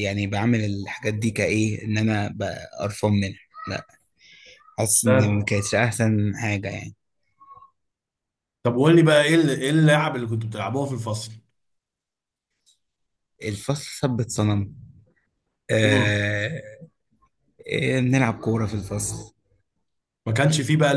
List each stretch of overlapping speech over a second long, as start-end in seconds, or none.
none